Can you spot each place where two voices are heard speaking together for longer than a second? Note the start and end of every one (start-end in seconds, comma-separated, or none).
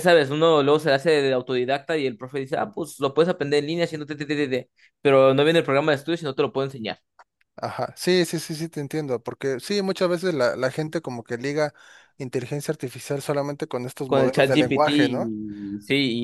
14.1-15.3